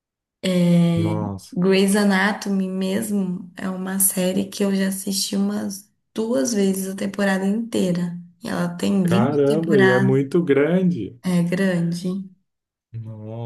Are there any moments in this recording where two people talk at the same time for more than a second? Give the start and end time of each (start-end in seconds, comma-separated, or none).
9.0-10.2